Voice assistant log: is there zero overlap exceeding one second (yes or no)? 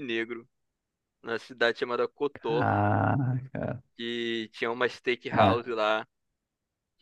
yes